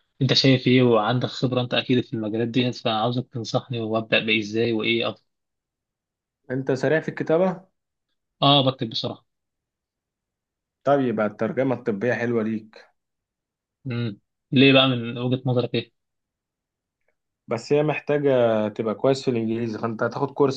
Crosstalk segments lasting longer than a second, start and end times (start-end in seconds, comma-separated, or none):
none